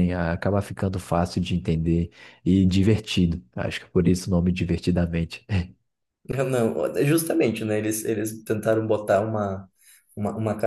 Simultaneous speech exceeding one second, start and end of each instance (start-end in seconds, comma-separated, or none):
none